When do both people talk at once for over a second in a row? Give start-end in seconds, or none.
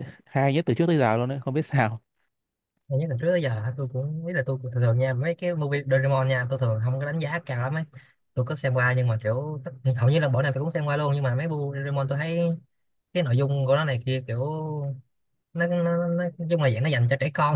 none